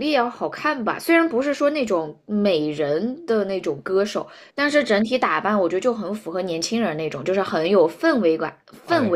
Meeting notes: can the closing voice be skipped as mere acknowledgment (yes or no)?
yes